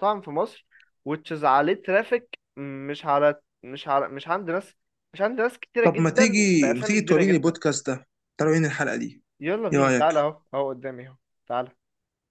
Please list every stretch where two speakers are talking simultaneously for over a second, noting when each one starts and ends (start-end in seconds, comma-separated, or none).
5.8-7.6